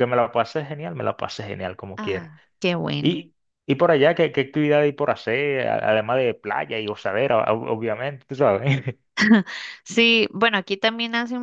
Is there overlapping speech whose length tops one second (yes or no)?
no